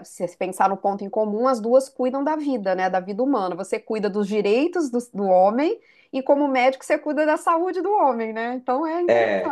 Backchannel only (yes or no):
no